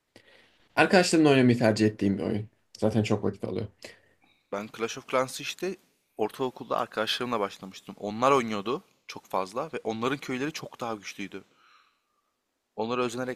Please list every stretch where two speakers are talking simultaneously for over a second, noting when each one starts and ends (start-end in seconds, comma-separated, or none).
none